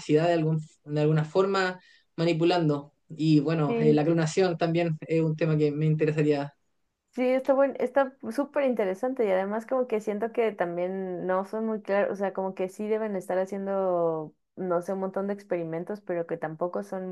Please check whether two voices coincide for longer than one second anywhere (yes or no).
no